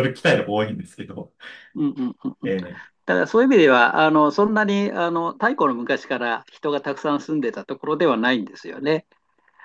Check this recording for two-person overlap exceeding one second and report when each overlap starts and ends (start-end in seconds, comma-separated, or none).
none